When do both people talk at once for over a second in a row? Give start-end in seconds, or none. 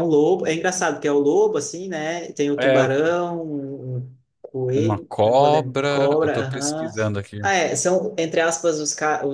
4.7-6.9